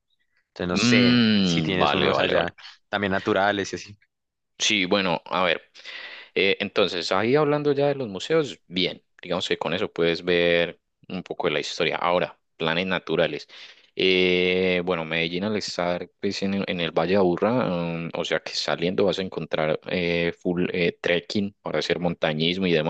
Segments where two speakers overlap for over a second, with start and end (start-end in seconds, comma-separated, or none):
0.7-2.5